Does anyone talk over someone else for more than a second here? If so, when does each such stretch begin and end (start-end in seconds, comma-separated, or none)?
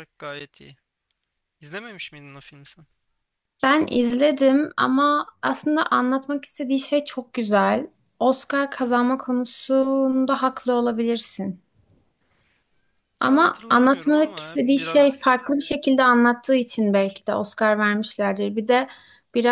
13.2-15.2